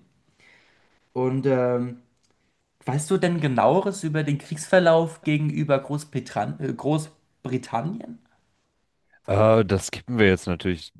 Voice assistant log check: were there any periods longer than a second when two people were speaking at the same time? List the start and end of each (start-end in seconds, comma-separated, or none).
none